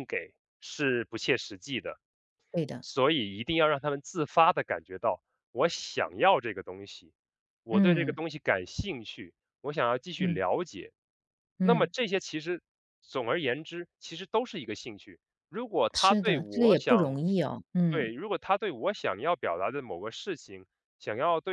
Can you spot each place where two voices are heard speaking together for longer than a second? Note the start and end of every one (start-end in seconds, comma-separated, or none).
15.9-17.1